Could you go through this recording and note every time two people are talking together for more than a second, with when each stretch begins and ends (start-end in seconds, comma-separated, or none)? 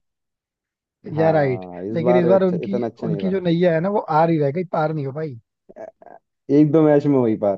1.2-3.4